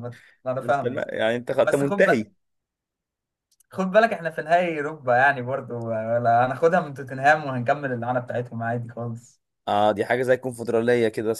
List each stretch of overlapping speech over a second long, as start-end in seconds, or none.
none